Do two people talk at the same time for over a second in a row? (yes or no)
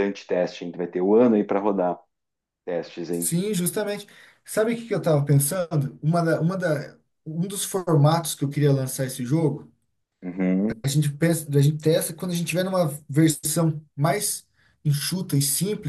no